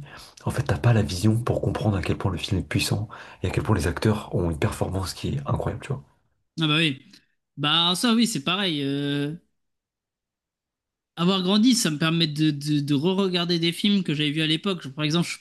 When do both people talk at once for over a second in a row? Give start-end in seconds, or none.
none